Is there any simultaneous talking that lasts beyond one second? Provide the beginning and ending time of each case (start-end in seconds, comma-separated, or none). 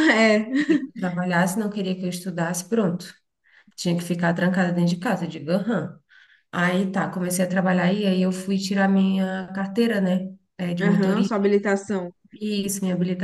none